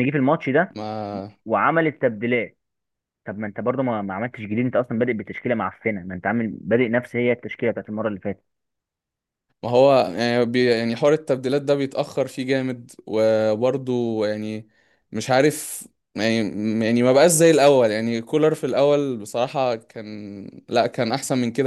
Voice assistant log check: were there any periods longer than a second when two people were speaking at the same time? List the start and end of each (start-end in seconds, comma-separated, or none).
none